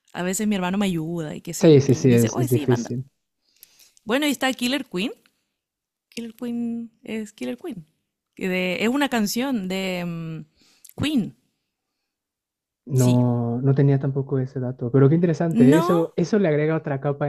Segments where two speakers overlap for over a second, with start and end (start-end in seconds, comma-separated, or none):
1.6-2.9